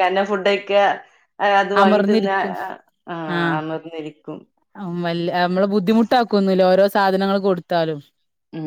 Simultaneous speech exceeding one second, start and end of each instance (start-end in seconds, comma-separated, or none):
none